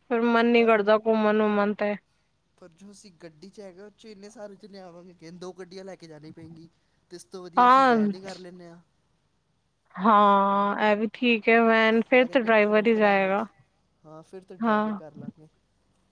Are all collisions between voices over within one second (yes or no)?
no